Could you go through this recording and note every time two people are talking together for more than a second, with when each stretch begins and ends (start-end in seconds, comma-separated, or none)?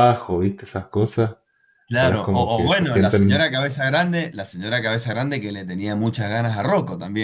1.9-3.4